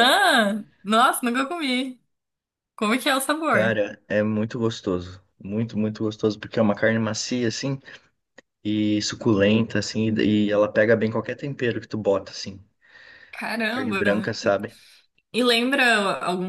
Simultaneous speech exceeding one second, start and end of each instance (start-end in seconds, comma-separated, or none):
none